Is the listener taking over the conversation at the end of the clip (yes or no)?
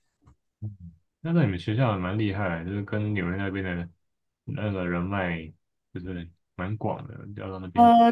yes